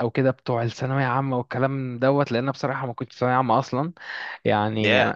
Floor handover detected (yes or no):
no